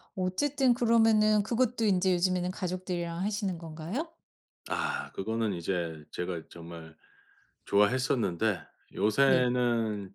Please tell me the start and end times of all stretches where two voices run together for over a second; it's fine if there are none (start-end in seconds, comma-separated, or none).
none